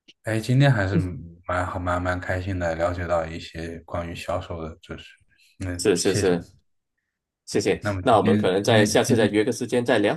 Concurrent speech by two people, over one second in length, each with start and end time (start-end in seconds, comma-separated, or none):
7.8-9.4